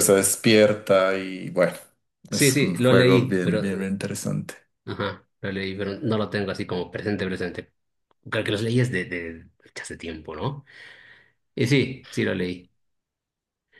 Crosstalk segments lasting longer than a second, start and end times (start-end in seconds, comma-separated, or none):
2.3-3.6